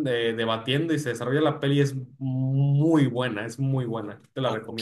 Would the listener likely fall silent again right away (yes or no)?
no